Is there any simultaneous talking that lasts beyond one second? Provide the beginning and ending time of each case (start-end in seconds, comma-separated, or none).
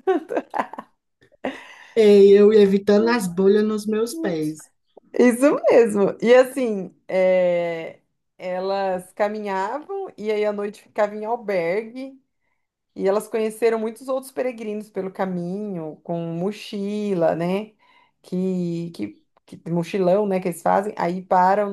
none